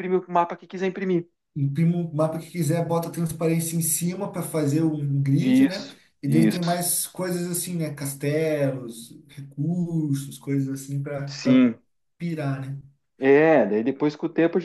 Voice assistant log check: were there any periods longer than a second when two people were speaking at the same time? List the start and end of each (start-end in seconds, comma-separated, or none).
5.4-6.8